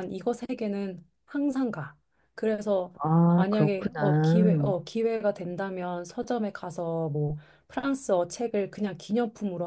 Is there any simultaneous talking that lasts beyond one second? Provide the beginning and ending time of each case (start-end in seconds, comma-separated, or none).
3.4-4.7